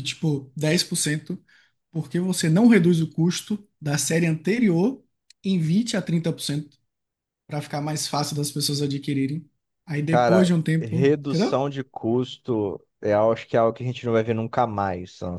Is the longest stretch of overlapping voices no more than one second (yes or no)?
no